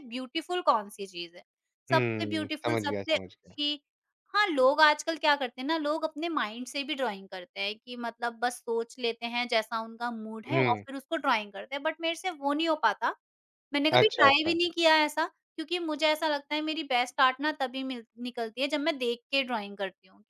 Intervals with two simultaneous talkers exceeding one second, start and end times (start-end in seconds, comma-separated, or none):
1.9-3.5